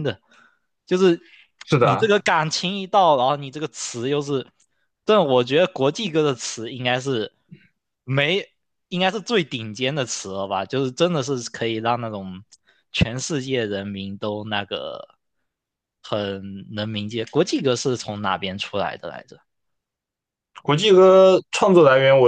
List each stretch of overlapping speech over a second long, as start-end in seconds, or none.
none